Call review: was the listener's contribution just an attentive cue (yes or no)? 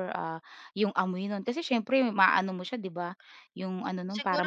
no